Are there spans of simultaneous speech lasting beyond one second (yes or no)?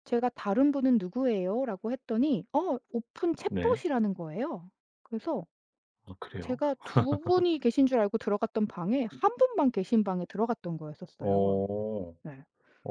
no